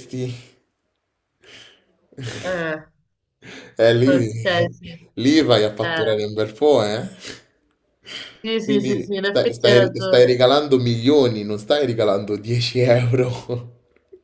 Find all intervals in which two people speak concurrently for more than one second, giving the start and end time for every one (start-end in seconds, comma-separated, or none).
8.6-10.3